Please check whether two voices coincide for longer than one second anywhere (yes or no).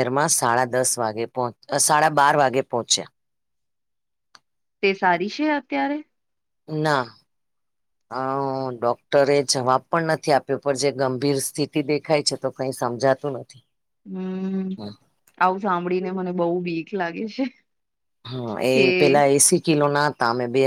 no